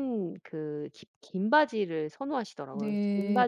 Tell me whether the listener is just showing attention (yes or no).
no